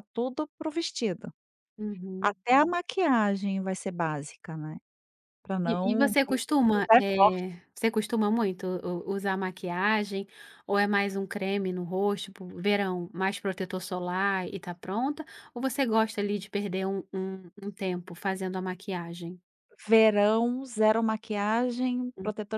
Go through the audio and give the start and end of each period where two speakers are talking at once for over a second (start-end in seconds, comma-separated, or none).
5.6-7.6